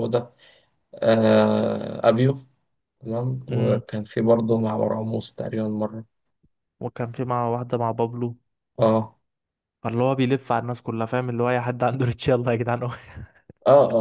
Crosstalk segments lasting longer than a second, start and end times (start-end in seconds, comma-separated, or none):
none